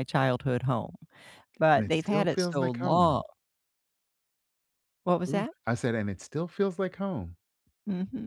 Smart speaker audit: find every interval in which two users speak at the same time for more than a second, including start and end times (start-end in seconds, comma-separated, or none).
1.7-3.2